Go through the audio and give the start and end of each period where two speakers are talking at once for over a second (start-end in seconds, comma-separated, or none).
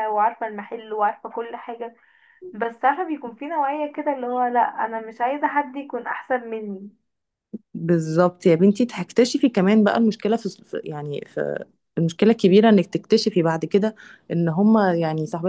none